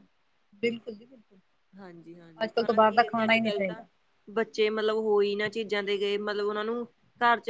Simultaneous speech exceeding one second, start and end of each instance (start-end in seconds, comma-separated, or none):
2.4-3.8